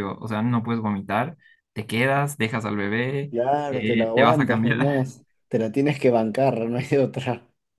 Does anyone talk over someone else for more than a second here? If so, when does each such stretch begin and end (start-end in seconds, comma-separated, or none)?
3.3-5.1